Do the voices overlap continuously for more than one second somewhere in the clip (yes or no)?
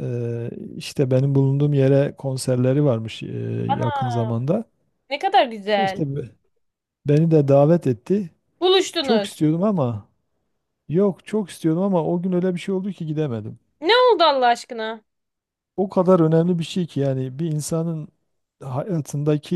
no